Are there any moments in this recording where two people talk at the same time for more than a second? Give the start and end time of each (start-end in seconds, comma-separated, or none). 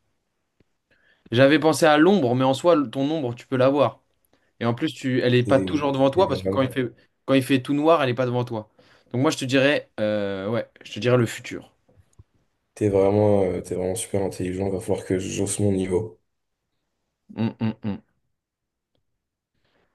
5.4-6.8